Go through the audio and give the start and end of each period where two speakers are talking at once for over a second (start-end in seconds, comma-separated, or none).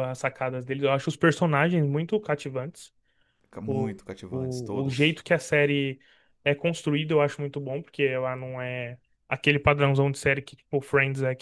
3.7-5.2